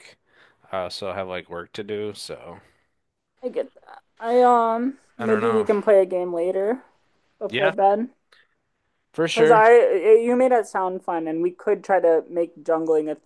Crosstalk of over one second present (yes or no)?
no